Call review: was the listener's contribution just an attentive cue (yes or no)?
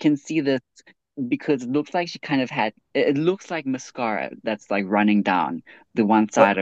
no